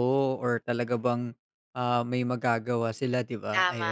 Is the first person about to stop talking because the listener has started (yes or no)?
yes